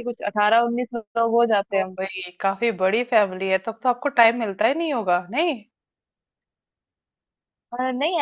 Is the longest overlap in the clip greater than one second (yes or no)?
no